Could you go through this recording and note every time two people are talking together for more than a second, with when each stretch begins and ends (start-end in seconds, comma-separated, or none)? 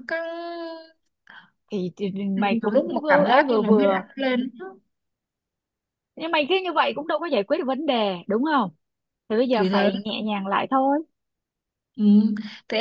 2.4-4.0